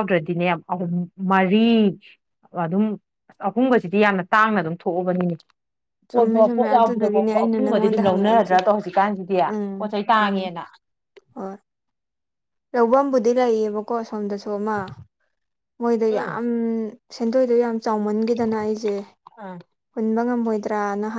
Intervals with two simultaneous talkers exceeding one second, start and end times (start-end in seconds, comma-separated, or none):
6.1-8.6